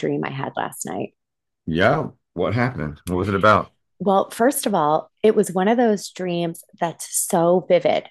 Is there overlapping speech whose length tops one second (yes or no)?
no